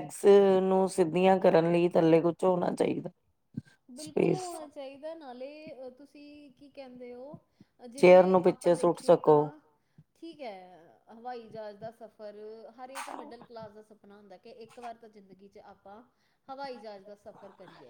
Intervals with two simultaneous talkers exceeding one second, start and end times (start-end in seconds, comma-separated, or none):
8.0-9.4